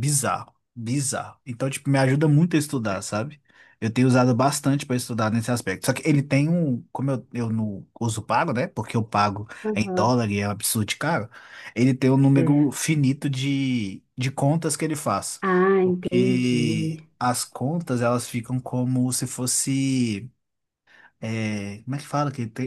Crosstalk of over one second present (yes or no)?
yes